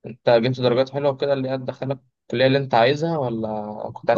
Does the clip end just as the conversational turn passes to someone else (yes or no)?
yes